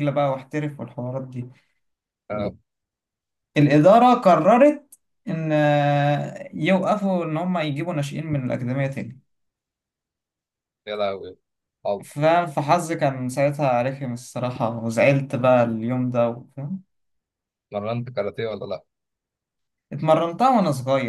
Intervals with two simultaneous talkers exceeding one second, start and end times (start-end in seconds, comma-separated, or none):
none